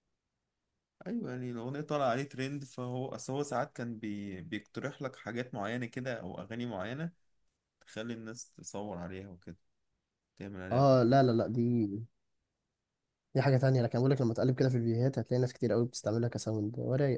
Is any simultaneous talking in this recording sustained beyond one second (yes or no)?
no